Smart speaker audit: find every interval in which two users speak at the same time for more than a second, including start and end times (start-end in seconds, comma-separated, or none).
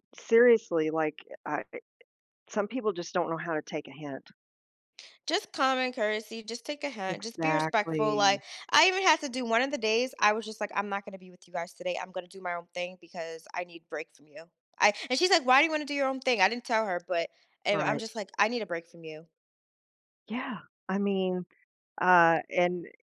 7.1-8.4